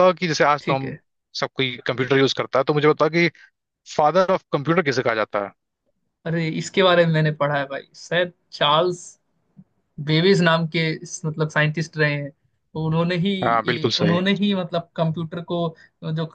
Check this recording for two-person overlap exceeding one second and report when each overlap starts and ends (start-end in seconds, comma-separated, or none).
none